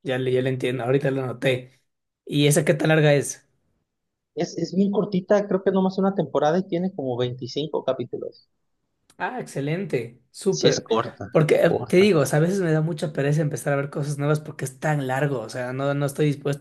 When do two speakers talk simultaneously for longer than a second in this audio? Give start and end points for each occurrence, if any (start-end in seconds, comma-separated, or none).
none